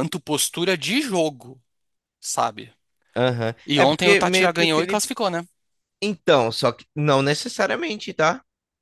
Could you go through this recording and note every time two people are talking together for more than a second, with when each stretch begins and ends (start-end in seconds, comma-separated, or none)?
3.6-5.1